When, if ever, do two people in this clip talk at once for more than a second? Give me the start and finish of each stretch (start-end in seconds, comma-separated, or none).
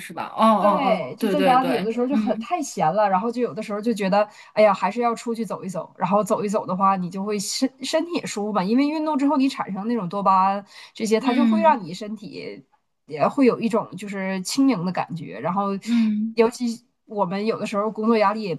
0.6-2.5